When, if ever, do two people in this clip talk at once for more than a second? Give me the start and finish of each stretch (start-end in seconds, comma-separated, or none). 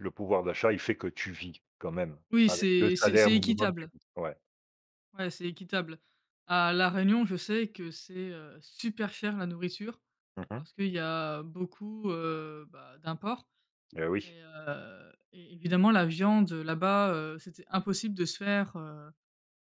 2.3-3.9